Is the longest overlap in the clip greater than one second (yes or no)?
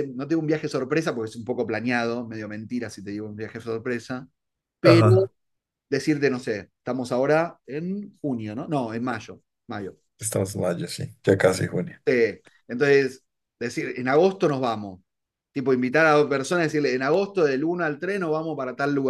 no